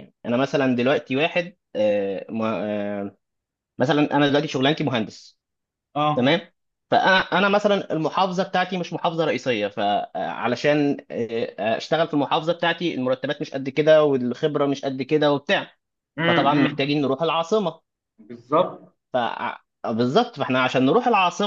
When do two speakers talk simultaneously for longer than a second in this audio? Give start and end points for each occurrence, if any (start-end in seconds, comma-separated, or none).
none